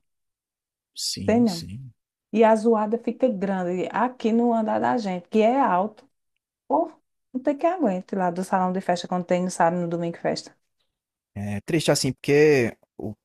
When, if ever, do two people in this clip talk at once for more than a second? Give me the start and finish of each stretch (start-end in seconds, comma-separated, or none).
none